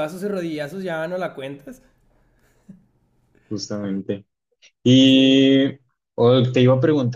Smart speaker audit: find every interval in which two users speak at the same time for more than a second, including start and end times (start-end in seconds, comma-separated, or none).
none